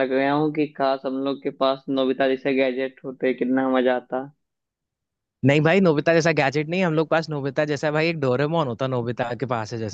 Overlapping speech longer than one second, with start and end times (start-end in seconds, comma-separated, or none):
none